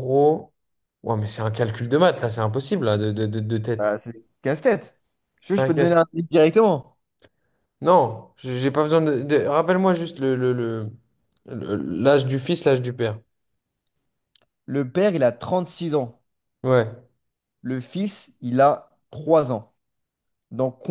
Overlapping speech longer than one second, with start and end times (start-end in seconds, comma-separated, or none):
none